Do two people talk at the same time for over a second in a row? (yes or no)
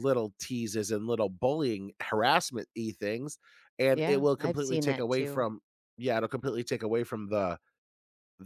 yes